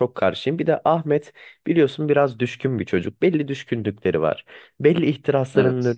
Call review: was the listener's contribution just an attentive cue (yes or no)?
yes